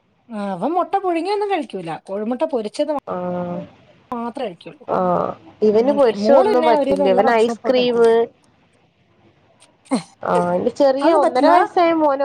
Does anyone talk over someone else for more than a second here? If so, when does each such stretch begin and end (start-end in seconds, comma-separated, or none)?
5.8-8.1